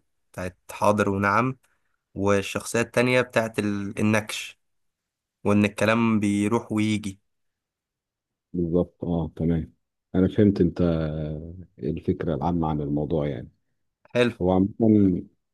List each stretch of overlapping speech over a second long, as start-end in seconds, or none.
none